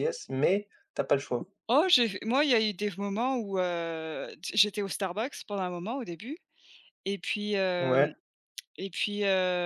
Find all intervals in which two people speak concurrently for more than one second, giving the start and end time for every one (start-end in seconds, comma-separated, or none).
none